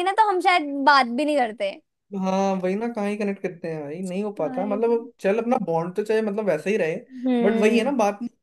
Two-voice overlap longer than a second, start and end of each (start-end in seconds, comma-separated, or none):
none